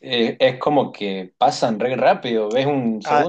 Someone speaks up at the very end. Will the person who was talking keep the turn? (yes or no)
no